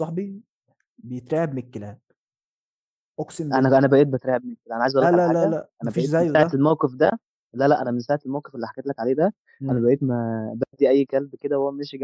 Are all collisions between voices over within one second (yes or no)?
no